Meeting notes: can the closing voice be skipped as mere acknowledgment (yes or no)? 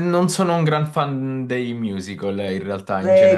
no